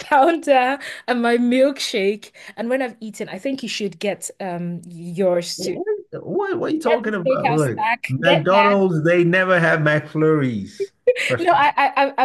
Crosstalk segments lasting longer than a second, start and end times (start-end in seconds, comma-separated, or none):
6.8-8.8